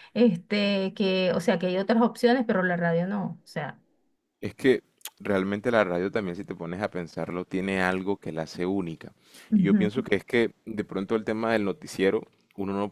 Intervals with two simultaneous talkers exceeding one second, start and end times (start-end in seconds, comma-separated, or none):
none